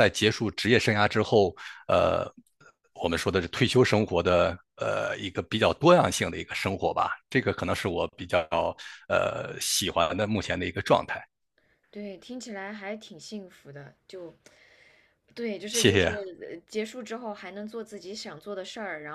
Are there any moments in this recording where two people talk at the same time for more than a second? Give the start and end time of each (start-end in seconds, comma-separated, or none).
none